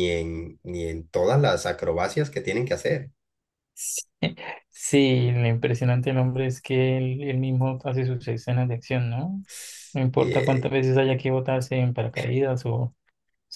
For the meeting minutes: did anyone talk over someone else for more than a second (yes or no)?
no